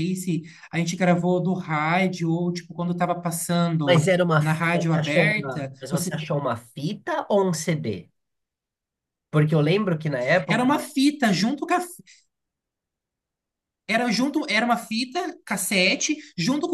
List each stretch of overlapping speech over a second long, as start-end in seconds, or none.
3.8-6.1